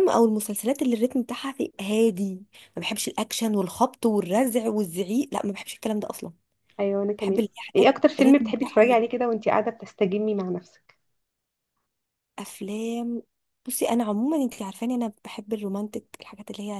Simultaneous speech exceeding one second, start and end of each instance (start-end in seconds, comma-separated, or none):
7.2-9.0